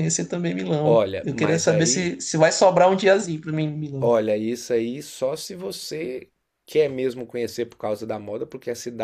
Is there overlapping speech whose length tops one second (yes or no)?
yes